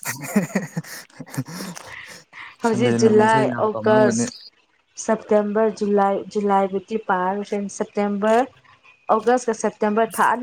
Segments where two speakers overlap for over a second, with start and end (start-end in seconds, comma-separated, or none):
2.7-4.2